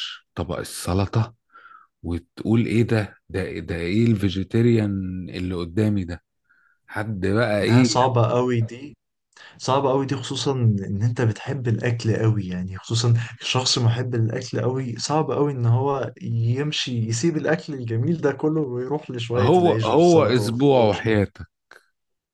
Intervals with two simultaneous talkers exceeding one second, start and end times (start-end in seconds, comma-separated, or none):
19.4-20.9